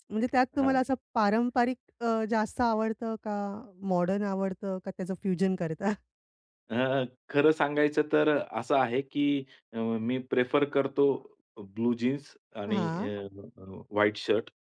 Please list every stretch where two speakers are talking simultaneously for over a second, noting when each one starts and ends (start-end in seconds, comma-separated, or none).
none